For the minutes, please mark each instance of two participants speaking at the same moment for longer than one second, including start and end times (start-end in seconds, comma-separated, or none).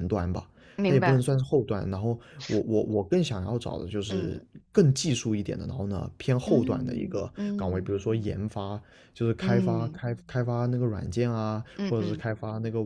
6.4-7.9